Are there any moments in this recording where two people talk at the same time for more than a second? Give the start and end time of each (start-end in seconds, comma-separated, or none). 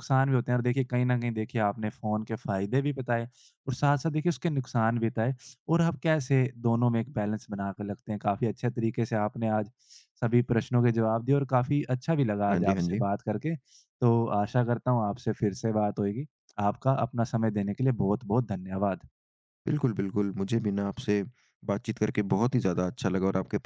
none